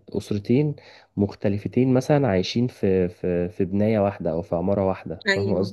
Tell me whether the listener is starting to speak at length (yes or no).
yes